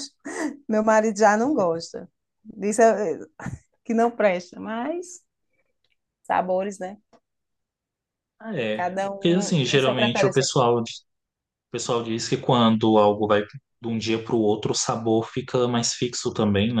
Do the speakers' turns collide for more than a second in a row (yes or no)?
yes